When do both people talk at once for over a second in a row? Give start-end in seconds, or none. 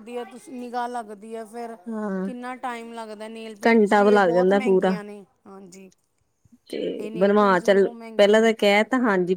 3.7-4.9, 7.0-8.5